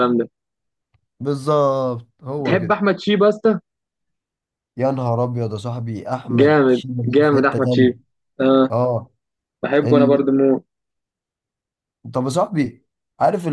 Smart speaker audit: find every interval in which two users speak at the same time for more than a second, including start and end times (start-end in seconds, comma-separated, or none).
6.3-7.9